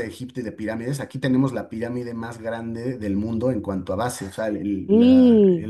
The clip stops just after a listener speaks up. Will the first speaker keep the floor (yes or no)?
yes